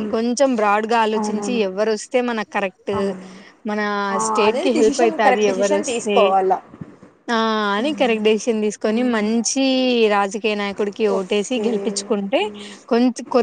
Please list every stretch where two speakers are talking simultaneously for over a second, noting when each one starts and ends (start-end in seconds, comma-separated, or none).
4.3-6.2, 7.9-9.3